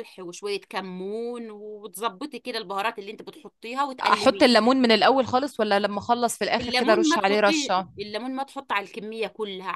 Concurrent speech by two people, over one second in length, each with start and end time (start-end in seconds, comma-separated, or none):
6.6-7.9